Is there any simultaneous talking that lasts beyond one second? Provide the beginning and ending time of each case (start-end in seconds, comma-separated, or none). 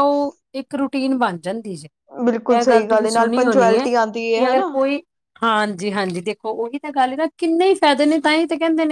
2.5-4.7